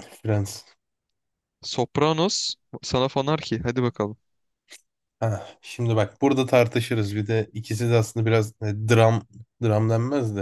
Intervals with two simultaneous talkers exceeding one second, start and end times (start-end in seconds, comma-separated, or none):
none